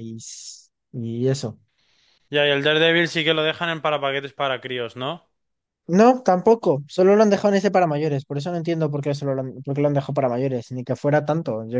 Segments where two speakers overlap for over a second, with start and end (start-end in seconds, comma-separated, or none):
none